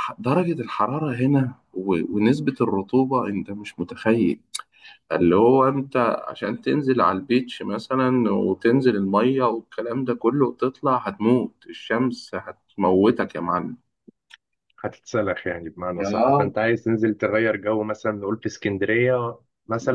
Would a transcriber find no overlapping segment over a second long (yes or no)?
yes